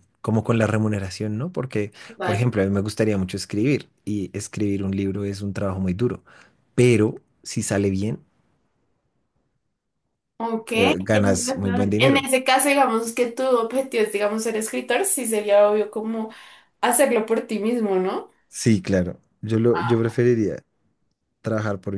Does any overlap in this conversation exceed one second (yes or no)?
yes